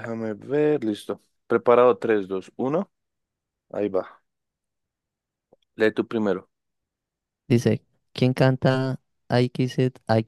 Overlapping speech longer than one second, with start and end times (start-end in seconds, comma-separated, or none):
none